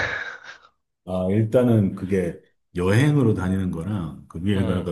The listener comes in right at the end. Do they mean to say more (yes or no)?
no